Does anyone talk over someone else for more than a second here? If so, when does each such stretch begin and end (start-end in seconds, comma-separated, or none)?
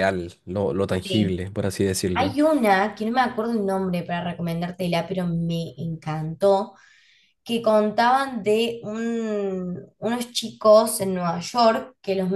none